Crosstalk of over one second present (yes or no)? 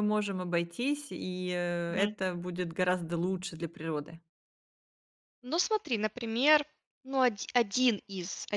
no